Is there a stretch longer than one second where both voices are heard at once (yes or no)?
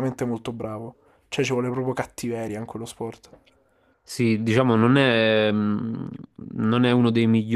no